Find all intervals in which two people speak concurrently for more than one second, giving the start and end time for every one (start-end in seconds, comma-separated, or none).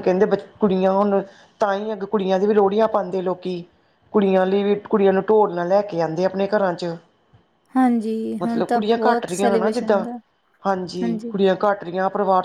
8.4-10.1